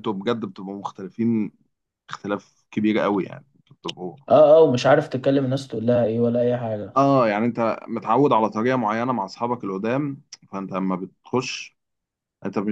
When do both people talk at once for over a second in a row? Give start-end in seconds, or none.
none